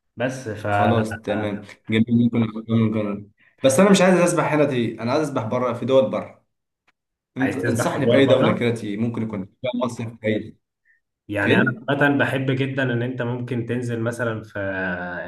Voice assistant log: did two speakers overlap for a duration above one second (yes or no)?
yes